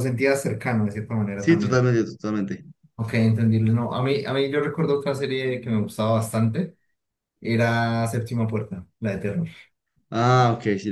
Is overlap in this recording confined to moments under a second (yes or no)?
yes